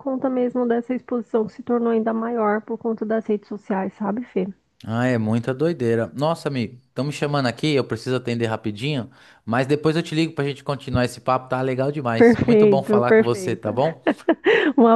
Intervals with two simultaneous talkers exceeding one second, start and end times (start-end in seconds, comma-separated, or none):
12.2-13.7